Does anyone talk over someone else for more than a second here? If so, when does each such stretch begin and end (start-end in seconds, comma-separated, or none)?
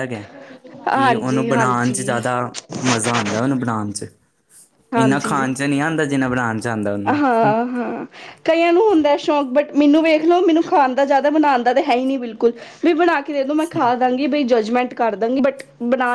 0.9-2.2